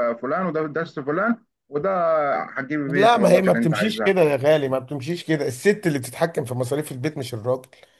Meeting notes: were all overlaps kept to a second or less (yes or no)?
no